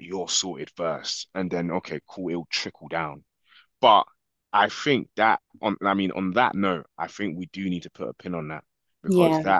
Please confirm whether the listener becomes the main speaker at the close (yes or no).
no